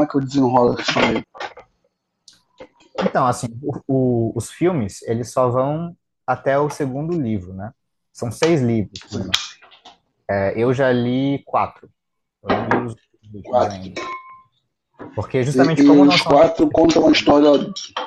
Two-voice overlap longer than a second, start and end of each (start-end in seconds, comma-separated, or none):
15.5-17.4